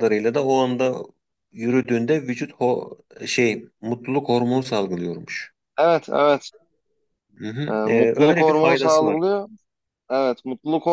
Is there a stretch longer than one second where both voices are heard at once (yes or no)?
yes